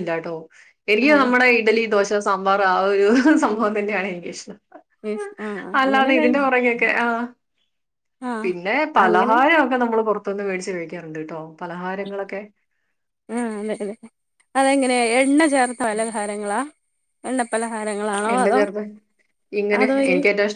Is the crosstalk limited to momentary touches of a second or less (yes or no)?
yes